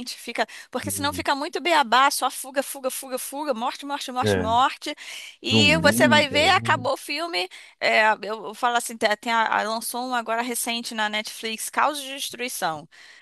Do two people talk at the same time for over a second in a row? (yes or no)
yes